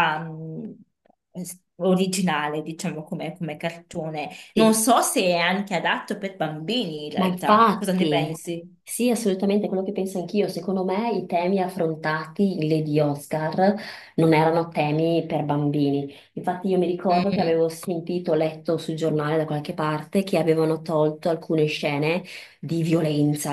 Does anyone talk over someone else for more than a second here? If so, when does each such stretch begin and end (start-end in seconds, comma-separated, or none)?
7.1-8.4